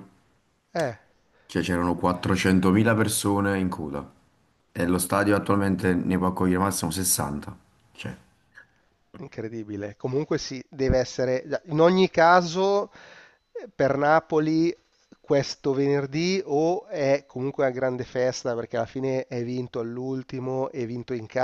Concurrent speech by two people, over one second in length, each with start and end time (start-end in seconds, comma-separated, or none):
none